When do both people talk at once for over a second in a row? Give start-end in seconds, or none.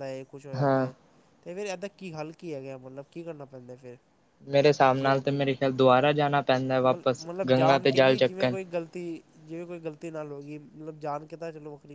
6.9-8.5